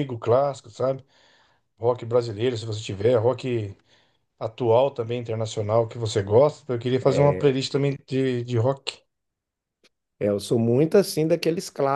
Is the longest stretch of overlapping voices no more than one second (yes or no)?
yes